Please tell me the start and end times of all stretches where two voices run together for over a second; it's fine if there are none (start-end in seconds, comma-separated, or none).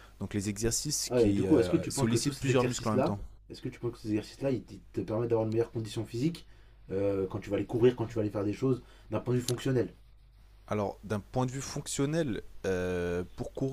1.1-3.2